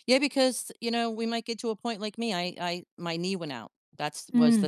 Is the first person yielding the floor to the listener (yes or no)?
no